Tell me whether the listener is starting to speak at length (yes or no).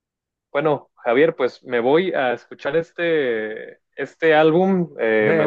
no